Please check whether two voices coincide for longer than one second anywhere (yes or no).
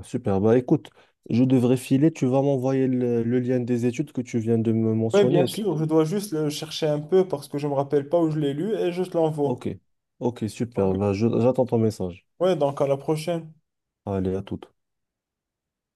no